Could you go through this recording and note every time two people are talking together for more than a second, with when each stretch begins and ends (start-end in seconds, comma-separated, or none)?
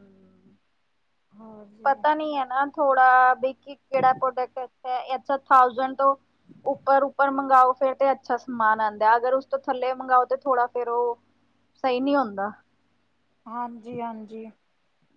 none